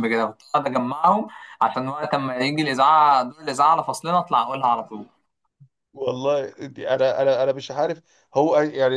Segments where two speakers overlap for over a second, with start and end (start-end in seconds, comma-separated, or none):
none